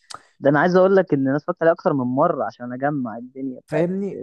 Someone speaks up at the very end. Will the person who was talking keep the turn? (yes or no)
no